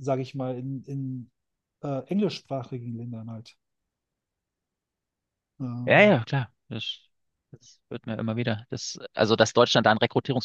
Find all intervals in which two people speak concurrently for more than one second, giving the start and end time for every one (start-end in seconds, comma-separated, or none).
none